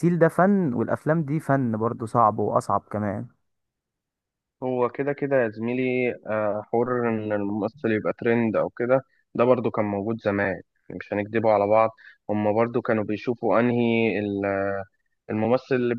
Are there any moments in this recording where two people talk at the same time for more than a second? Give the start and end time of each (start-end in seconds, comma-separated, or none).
none